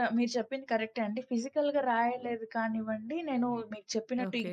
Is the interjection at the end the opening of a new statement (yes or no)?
no